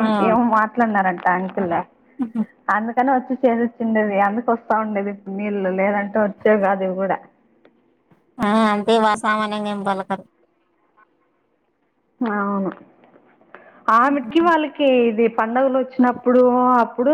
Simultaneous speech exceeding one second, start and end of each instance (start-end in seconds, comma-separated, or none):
none